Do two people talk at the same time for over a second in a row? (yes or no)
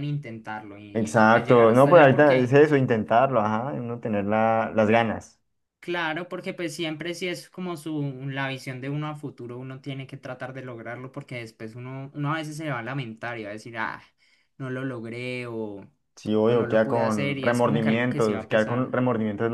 yes